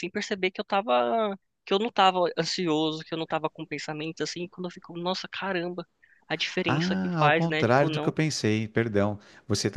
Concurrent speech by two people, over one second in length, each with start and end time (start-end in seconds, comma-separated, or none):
6.6-8.2